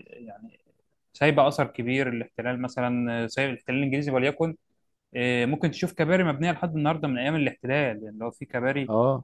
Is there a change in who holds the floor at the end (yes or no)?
yes